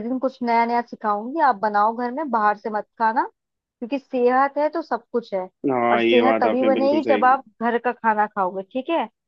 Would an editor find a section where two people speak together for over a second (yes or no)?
yes